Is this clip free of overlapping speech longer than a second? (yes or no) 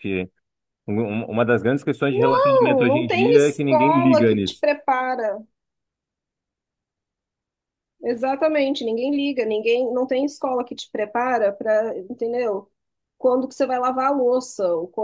no